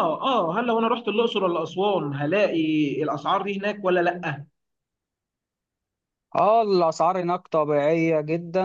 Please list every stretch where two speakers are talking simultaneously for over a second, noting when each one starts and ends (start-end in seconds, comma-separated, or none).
none